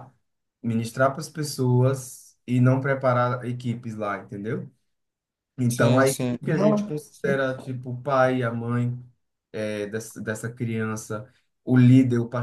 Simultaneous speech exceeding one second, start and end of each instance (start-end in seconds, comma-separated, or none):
5.7-7.4